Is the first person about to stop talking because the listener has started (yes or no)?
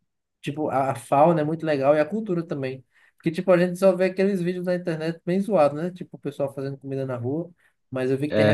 no